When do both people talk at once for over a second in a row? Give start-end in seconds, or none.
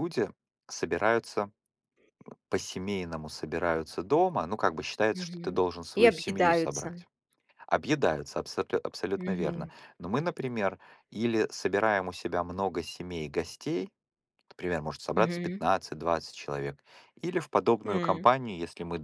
5.1-6.9